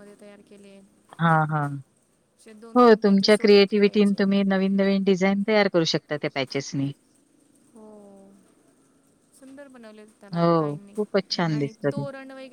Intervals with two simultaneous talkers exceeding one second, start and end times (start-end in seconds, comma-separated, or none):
2.8-4.2